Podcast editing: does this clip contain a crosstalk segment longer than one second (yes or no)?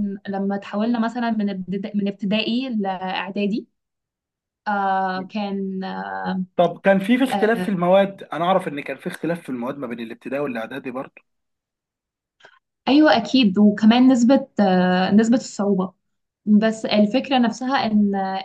no